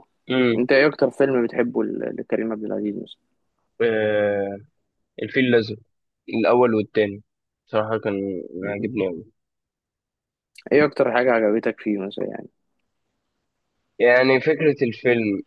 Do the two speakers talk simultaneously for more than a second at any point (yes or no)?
no